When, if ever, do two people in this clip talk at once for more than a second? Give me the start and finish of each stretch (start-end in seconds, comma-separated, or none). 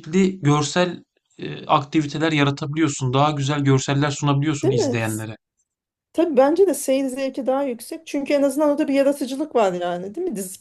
none